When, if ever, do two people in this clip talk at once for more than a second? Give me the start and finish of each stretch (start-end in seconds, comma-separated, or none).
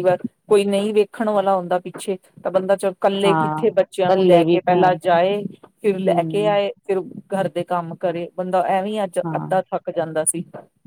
3.2-5.0